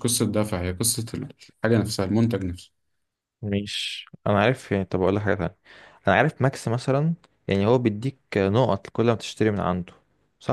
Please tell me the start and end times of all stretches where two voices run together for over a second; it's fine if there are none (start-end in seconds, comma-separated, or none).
none